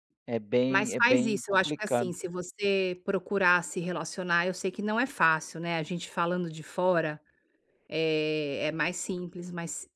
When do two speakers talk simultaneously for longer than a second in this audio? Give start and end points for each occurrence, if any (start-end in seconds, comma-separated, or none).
0.7-2.1